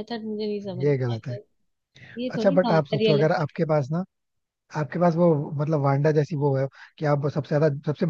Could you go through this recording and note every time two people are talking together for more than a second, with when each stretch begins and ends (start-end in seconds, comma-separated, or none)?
2.4-3.7